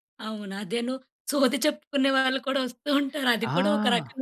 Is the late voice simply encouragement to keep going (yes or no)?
no